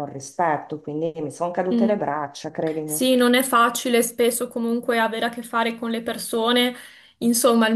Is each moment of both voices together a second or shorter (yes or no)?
yes